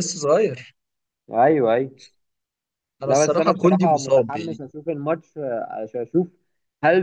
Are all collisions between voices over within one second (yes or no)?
no